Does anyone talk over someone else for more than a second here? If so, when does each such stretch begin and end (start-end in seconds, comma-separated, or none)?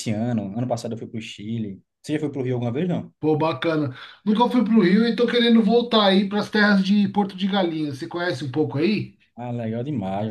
none